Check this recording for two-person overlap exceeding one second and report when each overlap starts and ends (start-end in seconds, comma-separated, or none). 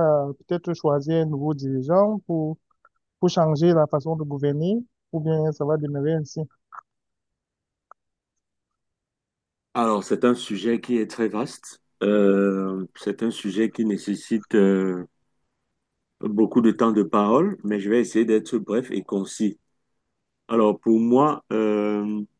none